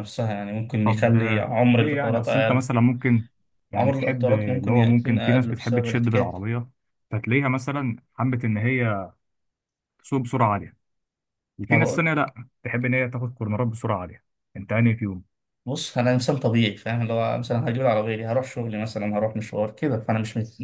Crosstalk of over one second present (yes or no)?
yes